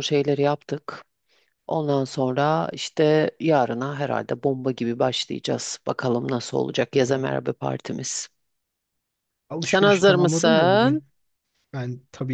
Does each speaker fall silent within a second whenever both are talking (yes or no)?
no